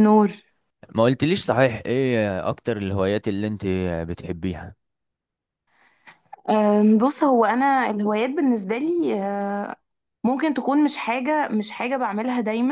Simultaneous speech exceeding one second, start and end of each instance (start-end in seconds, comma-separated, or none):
none